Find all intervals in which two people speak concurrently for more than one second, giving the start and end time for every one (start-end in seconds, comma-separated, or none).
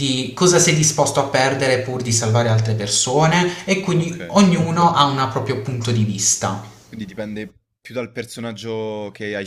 none